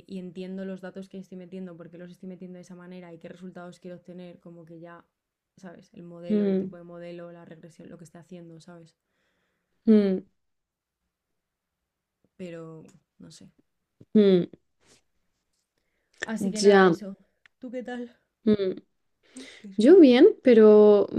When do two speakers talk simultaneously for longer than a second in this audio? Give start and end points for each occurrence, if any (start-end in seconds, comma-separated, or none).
none